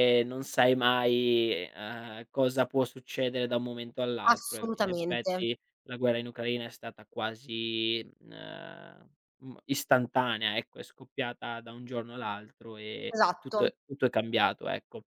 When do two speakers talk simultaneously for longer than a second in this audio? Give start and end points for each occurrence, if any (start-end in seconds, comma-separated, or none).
4.2-5.5